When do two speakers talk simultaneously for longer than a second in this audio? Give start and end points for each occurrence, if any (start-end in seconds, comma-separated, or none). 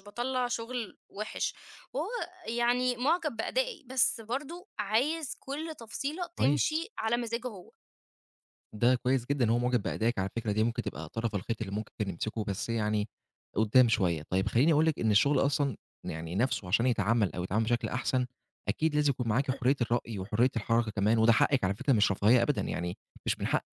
none